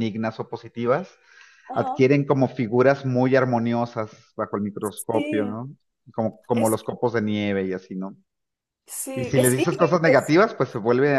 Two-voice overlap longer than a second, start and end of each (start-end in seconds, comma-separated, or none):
9.1-10.4